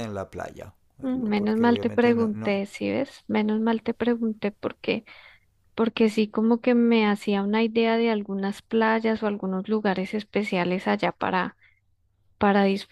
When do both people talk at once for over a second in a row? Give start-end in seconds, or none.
1.0-2.6